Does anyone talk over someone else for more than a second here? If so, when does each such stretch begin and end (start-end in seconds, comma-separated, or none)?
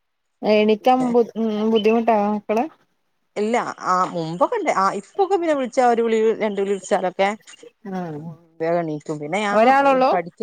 none